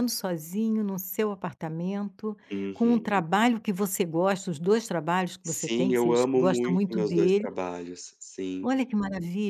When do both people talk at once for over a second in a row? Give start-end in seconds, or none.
5.4-7.5